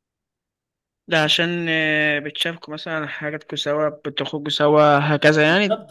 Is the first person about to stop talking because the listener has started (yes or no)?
yes